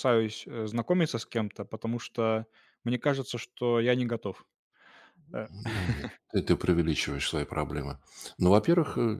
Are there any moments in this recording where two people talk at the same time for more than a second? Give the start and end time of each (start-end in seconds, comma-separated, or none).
none